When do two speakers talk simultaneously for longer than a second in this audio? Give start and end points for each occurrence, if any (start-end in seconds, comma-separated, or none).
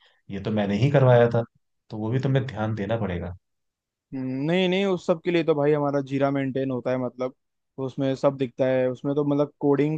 none